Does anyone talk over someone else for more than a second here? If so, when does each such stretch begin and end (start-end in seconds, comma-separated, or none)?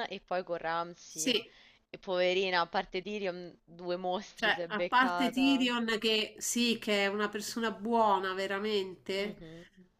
4.4-5.7